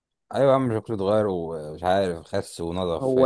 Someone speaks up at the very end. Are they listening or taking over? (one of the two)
taking over